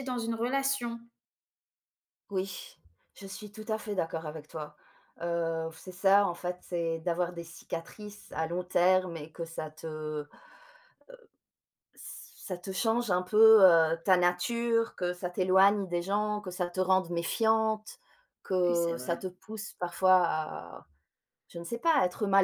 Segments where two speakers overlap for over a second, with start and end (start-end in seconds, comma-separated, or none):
none